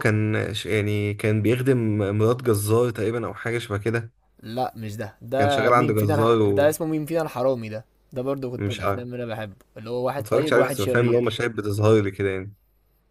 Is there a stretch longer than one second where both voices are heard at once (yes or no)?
yes